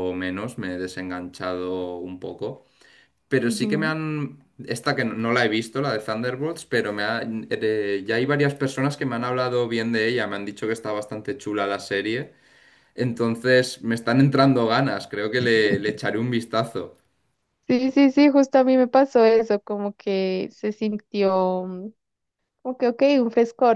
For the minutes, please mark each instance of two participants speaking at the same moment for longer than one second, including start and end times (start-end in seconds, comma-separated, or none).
none